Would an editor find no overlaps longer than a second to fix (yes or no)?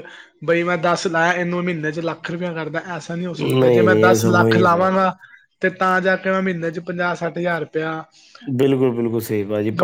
no